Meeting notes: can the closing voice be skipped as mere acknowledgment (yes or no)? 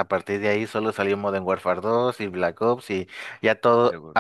yes